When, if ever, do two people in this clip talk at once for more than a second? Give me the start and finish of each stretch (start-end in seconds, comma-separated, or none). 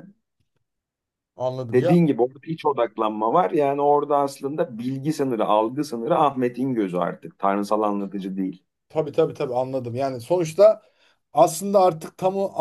none